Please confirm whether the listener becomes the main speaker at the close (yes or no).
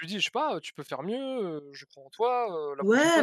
yes